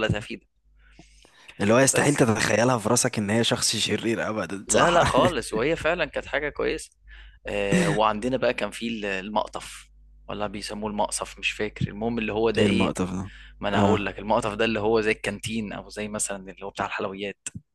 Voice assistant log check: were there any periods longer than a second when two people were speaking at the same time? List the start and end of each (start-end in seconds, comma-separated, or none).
none